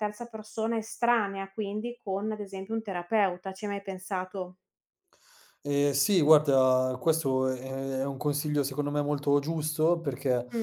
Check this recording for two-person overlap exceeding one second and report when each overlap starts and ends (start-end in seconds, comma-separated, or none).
none